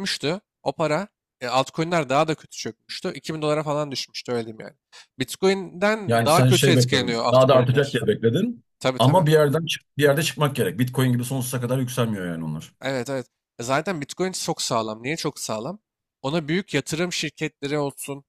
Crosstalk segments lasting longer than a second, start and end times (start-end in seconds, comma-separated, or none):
6.1-8.1